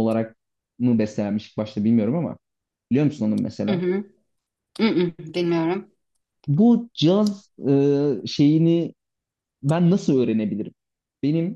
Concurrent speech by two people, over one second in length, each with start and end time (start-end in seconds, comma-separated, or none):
none